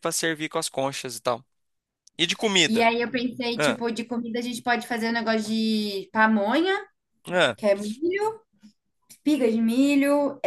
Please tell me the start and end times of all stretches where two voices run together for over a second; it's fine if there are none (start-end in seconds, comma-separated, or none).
none